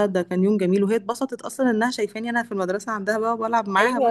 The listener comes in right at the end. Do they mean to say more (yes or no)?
yes